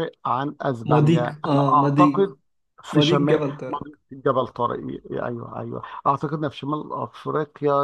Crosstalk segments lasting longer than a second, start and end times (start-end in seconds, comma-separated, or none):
0.8-2.1